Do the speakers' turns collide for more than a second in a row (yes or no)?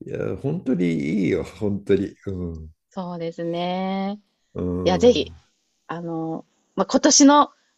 no